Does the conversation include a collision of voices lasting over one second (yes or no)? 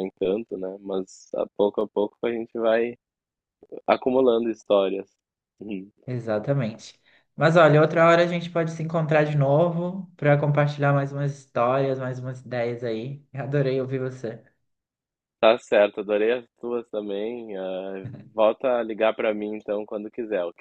no